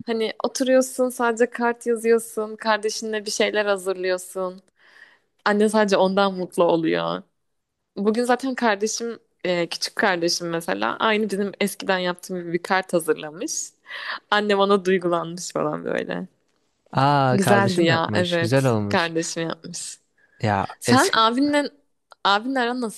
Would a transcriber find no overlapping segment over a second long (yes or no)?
no